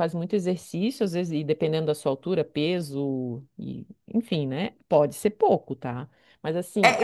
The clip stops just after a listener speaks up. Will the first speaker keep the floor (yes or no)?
no